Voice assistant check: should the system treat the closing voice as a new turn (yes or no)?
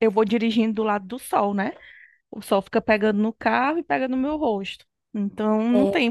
no